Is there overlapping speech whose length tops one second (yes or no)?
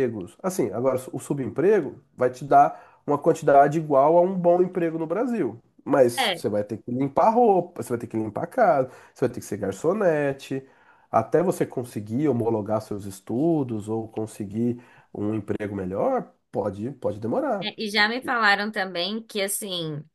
no